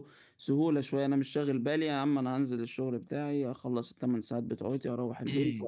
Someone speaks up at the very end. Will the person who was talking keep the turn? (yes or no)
no